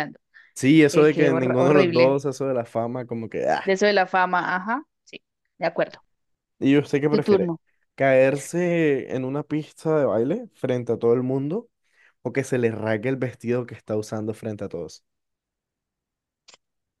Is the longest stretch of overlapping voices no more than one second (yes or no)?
no